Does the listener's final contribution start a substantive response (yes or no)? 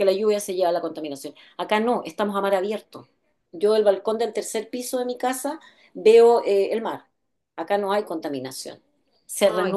yes